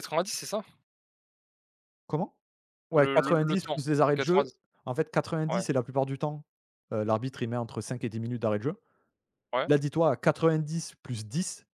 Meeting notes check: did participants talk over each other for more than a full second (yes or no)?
yes